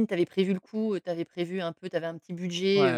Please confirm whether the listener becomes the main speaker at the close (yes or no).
yes